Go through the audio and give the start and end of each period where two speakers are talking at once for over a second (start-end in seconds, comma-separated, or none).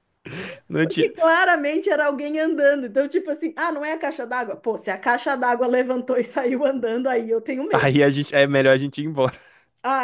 none